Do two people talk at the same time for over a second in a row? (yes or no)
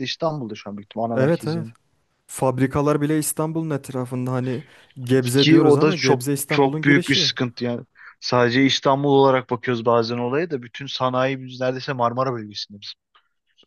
yes